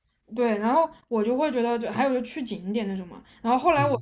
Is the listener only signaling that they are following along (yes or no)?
yes